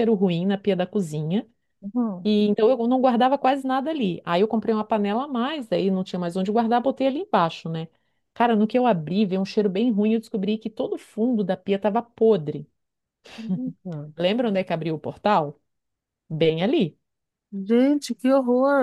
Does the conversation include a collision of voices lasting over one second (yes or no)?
no